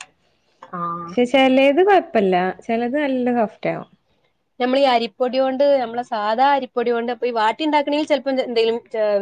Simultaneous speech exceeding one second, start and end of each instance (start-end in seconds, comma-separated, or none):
none